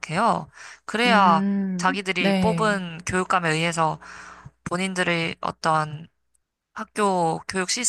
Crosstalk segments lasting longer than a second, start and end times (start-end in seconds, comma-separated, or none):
1.1-2.8